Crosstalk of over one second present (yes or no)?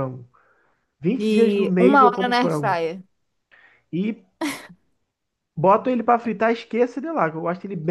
yes